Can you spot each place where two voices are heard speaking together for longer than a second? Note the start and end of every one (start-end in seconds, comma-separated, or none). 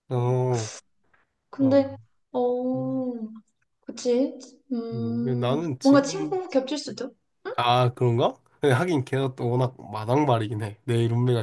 4.9-6.4